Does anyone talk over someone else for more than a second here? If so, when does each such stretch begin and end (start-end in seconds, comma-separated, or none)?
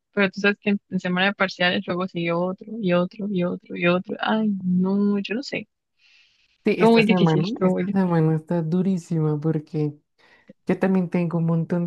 6.8-8.2